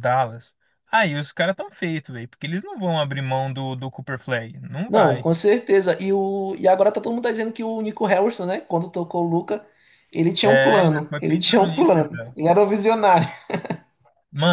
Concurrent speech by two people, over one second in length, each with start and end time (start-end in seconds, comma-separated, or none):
10.4-12.3